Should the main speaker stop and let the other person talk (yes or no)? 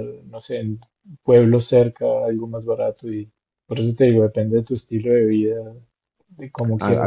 yes